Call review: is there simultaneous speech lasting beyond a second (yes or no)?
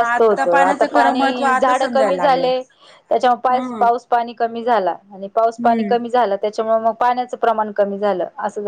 yes